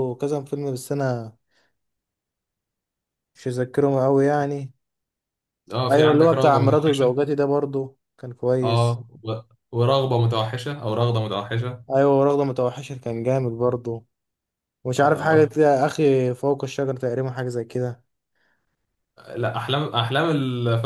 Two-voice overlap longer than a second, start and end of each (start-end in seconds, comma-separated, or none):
5.9-7.1